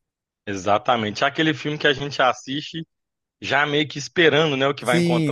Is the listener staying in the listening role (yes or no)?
no